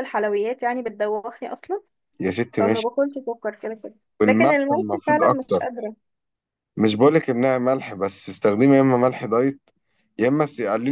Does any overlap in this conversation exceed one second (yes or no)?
yes